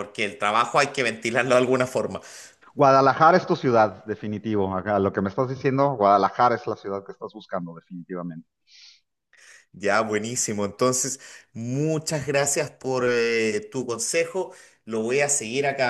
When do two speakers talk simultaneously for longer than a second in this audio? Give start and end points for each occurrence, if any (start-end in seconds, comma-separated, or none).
none